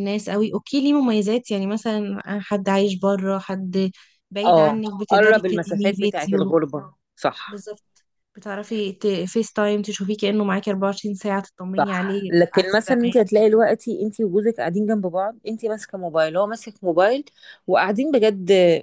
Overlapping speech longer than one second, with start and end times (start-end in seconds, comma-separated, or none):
4.5-6.5, 11.8-13.3